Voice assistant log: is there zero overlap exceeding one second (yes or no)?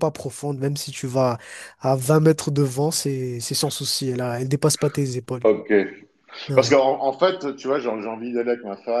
yes